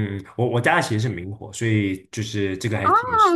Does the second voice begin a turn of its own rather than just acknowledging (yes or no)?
yes